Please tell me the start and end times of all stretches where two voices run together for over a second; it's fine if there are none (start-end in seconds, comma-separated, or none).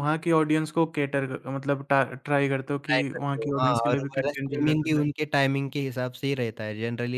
2.9-5.1